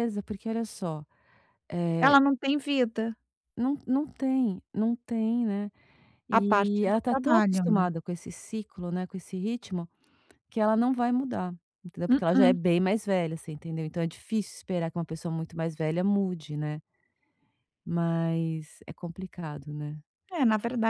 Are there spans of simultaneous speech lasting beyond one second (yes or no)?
yes